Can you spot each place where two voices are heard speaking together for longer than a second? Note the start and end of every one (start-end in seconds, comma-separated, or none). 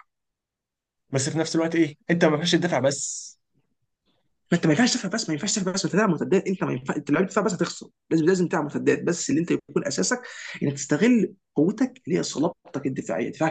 none